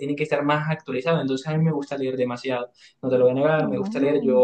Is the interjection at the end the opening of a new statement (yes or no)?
no